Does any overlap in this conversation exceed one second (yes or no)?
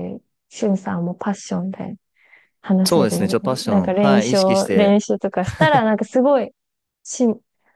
yes